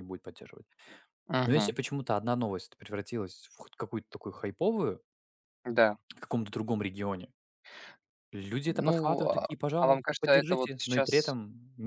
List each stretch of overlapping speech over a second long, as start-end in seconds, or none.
8.8-11.4